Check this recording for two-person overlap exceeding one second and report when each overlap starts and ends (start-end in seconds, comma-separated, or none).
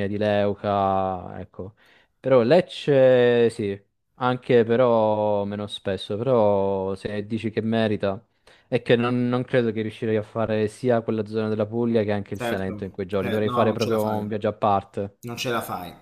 12.3-14.2